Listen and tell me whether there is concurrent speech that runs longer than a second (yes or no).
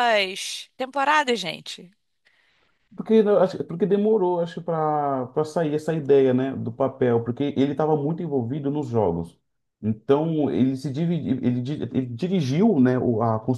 no